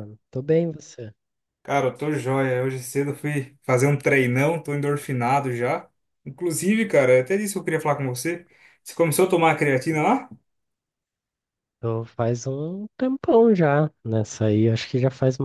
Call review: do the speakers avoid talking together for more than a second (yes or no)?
yes